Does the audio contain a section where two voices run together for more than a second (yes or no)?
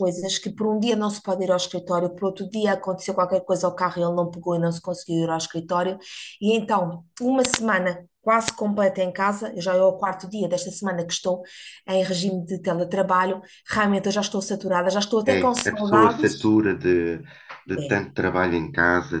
yes